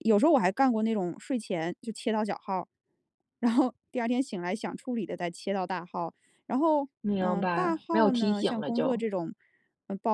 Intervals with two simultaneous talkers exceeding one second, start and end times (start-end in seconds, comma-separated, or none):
7.0-9.1